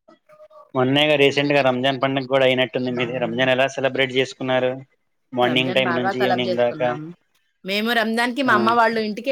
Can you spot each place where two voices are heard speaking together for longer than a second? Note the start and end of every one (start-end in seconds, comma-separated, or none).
5.5-6.9